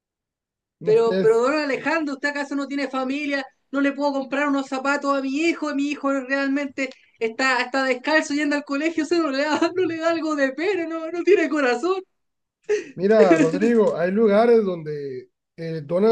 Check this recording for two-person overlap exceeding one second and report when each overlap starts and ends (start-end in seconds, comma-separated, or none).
none